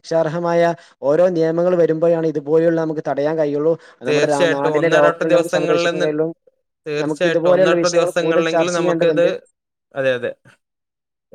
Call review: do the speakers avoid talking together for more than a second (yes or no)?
no